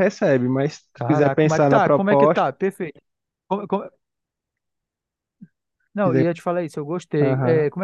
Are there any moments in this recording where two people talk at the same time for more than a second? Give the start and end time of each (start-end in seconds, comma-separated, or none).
0.9-2.5